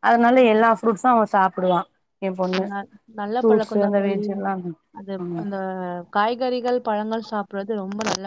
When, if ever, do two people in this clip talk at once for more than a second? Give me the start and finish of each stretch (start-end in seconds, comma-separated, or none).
none